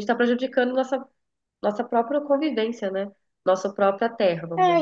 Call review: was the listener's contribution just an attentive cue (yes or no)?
no